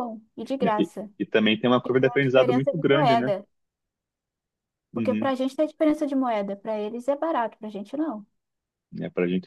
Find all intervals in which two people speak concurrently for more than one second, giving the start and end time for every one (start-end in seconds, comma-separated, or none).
1.8-3.3